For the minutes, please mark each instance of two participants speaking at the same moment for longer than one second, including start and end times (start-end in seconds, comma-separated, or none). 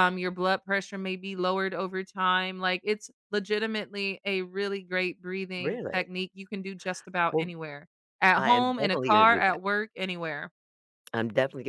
8.4-9.6